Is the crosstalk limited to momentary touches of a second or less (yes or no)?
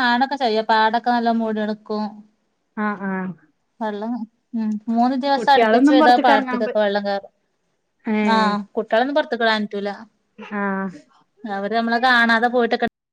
no